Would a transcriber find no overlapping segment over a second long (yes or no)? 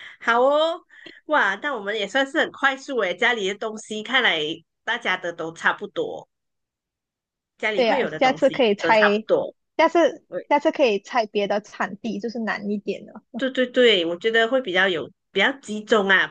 no